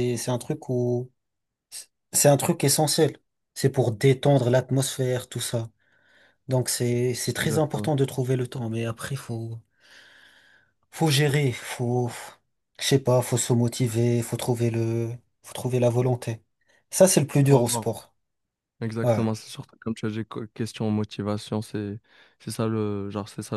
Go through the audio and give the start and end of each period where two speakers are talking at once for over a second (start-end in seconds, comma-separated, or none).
none